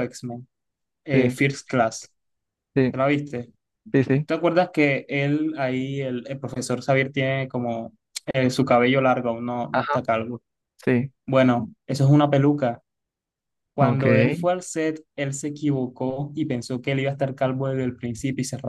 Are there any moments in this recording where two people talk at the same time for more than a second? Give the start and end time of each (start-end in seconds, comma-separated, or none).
none